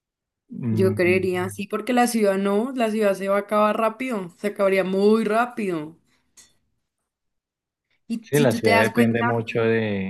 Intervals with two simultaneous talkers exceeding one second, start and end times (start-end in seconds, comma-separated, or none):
8.2-9.4